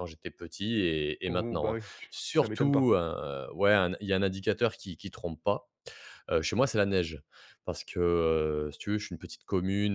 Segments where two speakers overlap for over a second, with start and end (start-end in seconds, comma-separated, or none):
1.3-2.9